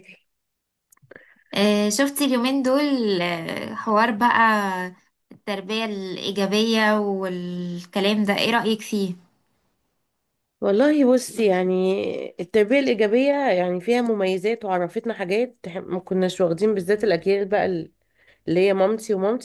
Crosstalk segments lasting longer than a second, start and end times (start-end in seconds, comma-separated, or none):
none